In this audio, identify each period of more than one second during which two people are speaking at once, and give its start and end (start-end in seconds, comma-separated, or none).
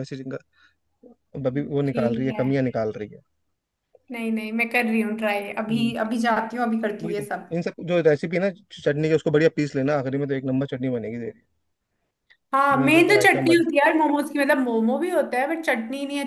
12.7-13.9